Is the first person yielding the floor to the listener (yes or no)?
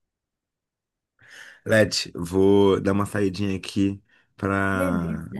no